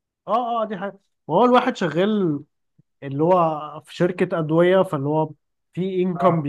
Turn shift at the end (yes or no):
no